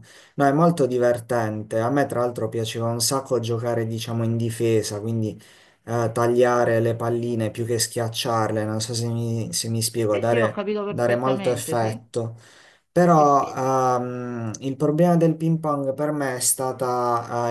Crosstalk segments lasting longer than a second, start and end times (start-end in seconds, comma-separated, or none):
10.1-12.0